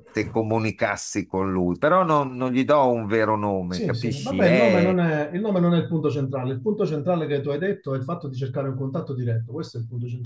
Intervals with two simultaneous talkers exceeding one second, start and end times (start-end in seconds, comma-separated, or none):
3.7-5.0